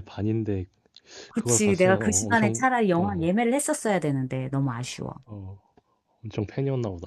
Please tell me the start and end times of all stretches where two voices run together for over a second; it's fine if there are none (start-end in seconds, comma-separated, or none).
1.4-3.3